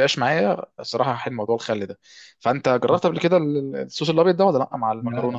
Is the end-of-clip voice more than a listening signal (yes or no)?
yes